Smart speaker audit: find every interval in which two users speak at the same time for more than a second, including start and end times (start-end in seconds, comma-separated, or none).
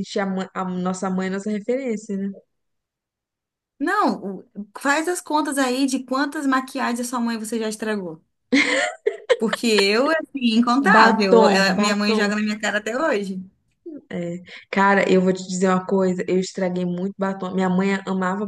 10.9-12.2